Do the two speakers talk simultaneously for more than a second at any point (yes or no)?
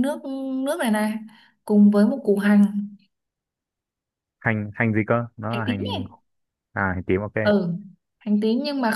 no